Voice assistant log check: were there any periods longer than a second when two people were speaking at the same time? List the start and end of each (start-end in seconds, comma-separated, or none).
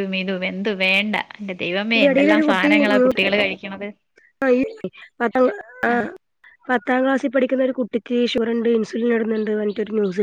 none